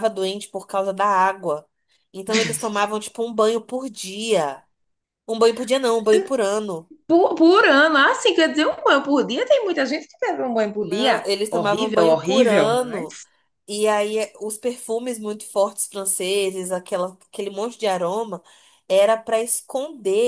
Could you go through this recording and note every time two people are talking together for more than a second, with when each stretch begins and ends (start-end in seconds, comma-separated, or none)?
10.8-13.1